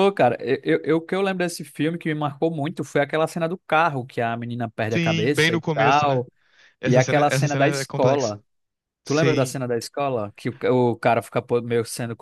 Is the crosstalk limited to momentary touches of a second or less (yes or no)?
no